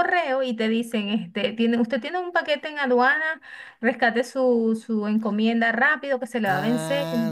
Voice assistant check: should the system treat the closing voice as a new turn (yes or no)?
yes